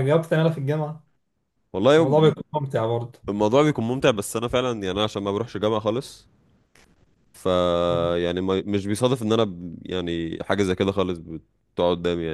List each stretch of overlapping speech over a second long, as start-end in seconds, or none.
none